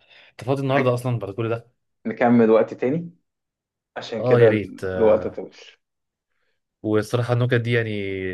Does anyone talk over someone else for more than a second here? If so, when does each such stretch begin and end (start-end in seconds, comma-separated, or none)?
4.2-5.4